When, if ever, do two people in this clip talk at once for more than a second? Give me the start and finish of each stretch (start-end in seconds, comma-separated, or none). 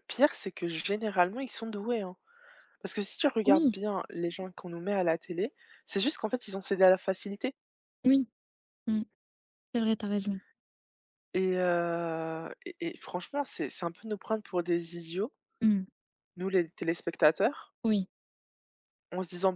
none